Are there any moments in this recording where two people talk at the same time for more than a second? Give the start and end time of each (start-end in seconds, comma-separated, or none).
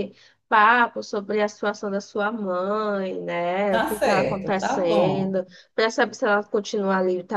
3.7-5.3